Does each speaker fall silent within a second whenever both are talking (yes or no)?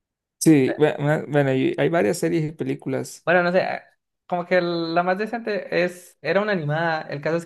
yes